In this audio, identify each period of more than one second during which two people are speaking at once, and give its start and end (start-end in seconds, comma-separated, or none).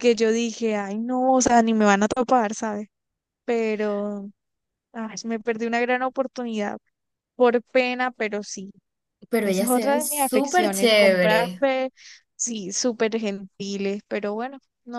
9.4-11.6